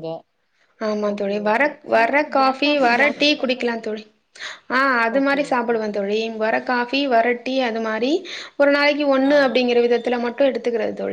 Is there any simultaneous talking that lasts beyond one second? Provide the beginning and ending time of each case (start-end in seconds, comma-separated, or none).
1.1-4.0